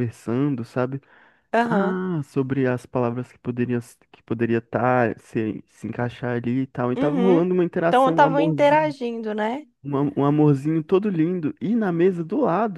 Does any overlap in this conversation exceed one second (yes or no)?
yes